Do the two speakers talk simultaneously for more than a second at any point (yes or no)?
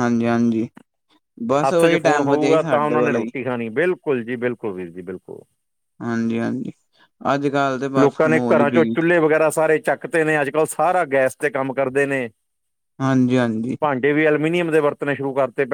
yes